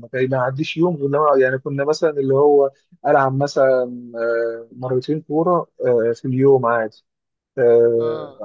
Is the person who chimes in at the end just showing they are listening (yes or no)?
yes